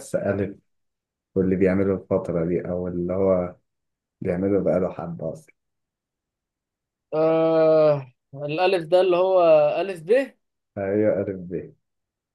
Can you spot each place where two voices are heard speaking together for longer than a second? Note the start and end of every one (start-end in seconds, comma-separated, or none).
none